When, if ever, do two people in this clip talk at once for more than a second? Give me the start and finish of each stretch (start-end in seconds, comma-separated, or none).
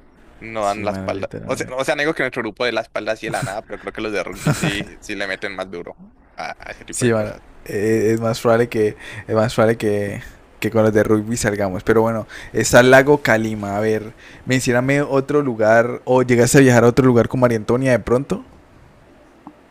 0.6-1.8